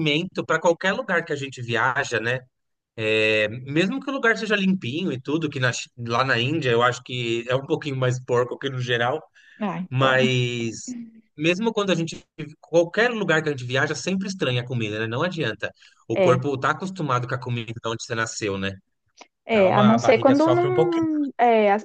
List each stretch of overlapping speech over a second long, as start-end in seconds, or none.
19.5-21.1